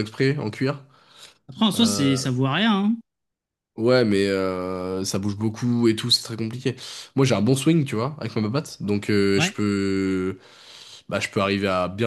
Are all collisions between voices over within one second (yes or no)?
yes